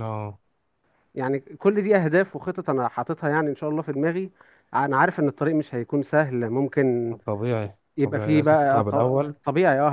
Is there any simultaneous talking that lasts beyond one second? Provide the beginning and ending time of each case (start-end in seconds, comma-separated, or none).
8.0-9.3